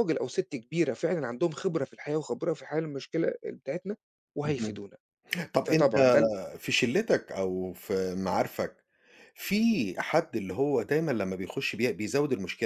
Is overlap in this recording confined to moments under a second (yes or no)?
yes